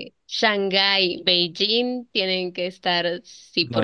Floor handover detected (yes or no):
yes